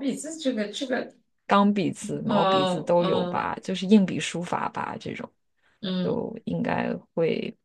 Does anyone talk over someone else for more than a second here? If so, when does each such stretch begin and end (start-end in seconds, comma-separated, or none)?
2.3-3.5